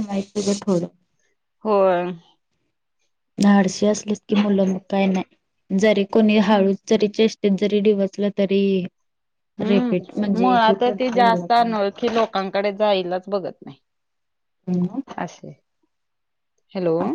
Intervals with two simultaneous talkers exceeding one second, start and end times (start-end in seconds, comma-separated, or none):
9.7-11.5